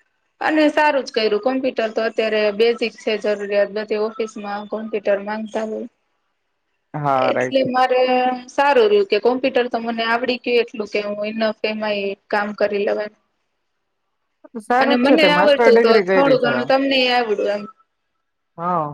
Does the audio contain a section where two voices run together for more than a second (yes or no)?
yes